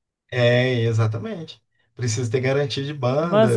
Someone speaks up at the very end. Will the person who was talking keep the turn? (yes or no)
no